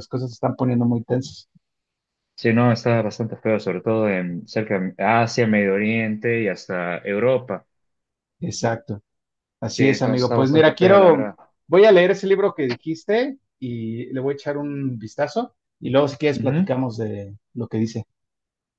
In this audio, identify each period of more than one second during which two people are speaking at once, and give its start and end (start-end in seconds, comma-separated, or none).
9.7-11.3